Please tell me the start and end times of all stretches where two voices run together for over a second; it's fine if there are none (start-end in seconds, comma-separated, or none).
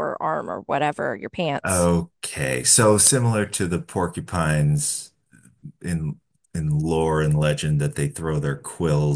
none